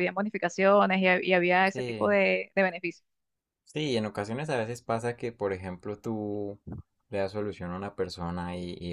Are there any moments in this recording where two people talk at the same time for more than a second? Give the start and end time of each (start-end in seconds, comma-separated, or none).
none